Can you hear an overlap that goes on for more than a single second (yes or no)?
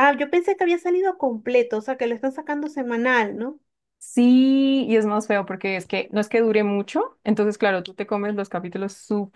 no